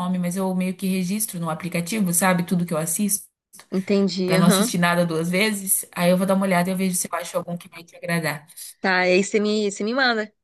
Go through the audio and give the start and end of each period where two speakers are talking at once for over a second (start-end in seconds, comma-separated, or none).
none